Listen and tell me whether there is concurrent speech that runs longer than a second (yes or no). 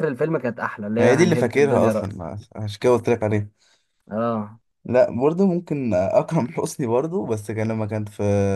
yes